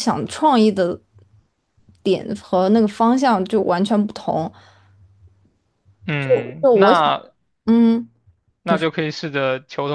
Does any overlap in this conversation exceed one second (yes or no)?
no